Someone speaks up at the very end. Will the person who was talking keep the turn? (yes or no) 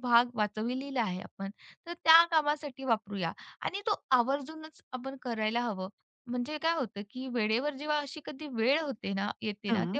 yes